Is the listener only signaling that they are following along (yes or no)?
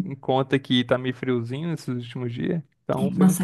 no